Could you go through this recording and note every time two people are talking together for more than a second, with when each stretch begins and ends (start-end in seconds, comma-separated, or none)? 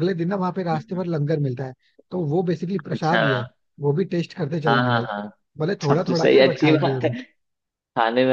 5.9-7.1